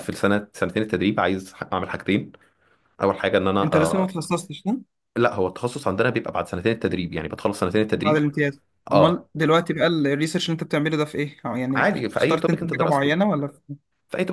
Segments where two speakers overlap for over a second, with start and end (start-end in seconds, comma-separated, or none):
11.8-13.2